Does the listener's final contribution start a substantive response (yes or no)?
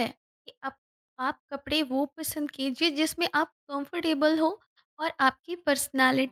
no